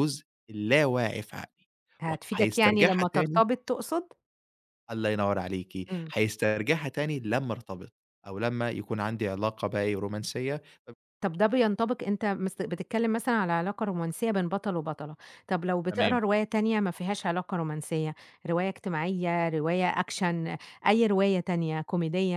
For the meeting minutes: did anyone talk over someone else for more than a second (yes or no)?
yes